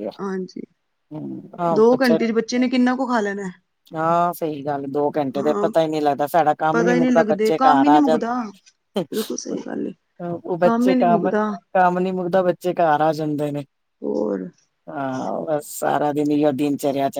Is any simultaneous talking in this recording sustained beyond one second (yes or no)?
yes